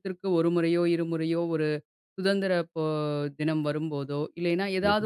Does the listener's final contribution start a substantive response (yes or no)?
no